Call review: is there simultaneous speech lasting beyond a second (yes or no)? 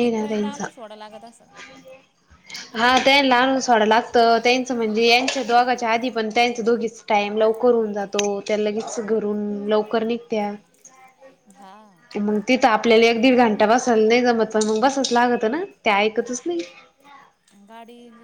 no